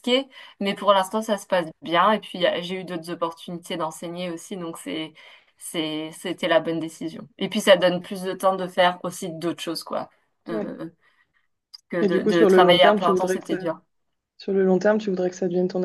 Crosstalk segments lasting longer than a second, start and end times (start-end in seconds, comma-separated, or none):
12.0-13.6